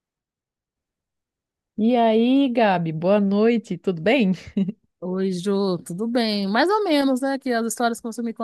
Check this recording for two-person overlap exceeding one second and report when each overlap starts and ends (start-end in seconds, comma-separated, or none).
none